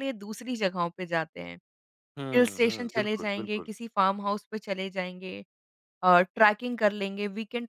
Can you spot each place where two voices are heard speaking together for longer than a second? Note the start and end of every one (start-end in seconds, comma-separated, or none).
2.3-3.7